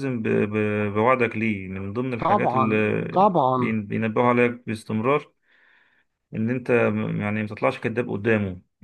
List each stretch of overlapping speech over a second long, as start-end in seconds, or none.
2.2-3.8